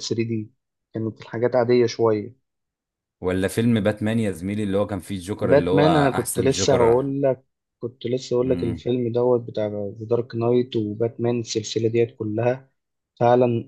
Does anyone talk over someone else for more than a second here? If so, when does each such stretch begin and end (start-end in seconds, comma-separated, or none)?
5.4-6.8